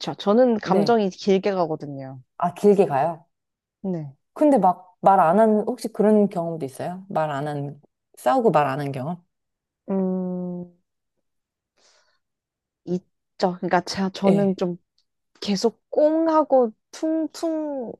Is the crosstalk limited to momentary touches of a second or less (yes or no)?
yes